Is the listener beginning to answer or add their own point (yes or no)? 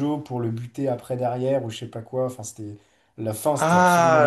yes